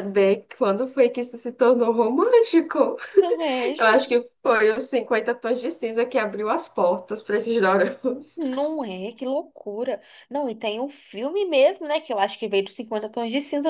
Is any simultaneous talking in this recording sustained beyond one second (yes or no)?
no